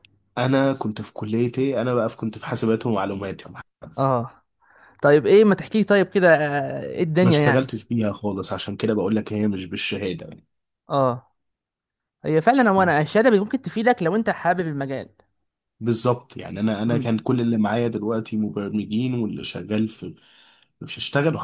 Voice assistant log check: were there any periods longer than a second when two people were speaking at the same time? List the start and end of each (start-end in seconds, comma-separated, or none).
none